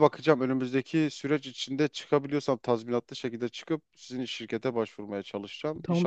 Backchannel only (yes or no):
no